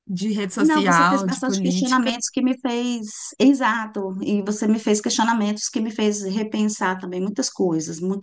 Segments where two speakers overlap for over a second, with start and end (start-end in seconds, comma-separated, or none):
0.6-2.1